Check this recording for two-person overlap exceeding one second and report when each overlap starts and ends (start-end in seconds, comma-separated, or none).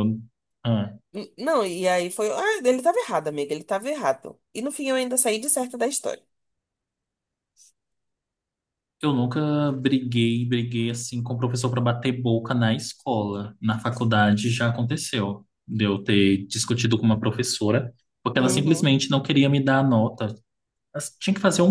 none